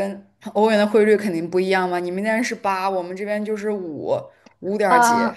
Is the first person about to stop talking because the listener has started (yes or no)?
no